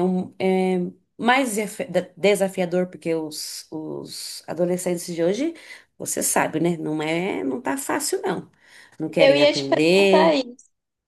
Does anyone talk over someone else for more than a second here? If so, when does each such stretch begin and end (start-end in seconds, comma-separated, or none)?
9.2-10.4